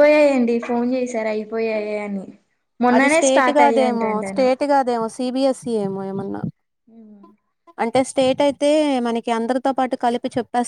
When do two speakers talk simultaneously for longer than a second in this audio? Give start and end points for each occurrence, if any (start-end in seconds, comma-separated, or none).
3.0-4.5